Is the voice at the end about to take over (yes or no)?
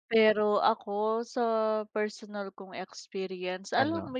no